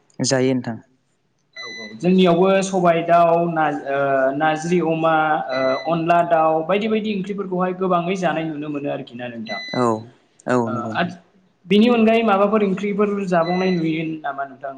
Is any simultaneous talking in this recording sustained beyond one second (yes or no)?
yes